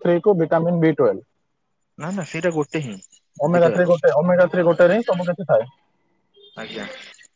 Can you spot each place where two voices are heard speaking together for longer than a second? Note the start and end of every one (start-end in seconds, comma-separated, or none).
3.5-5.2